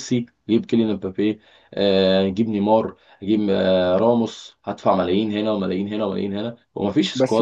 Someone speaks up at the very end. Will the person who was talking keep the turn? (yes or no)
no